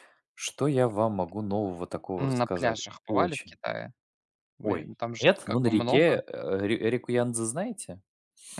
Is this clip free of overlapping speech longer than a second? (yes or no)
no